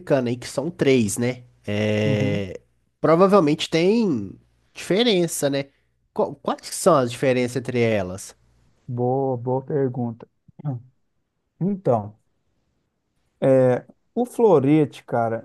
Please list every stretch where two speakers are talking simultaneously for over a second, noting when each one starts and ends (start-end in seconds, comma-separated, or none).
none